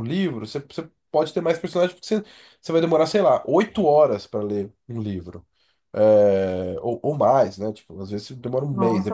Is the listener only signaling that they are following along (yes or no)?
no